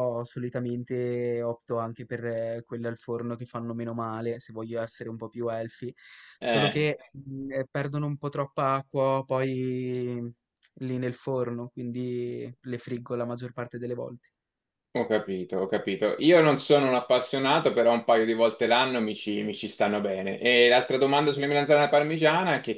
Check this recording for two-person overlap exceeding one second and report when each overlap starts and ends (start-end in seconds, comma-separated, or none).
none